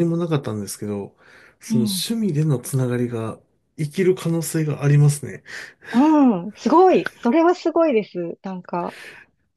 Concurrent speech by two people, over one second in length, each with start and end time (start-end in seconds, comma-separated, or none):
none